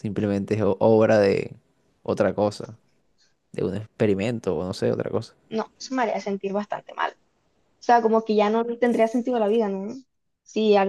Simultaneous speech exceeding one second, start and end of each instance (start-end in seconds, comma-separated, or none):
none